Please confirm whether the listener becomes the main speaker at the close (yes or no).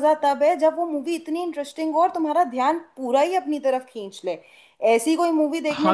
yes